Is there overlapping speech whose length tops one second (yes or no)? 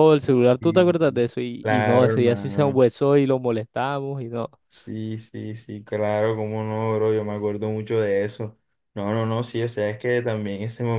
yes